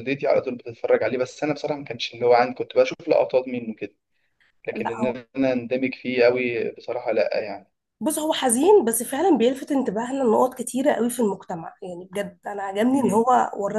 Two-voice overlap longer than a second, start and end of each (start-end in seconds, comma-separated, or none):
none